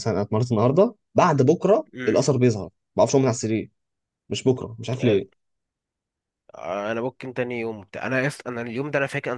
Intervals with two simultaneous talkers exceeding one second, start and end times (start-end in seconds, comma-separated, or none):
none